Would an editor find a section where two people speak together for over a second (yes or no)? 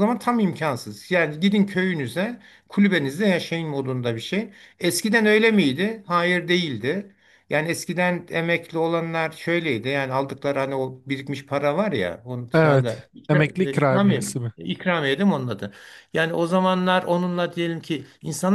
yes